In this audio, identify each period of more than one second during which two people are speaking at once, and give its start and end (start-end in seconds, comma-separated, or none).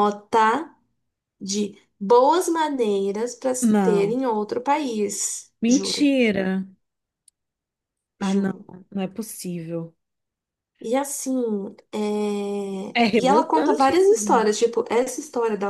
12.9-14.6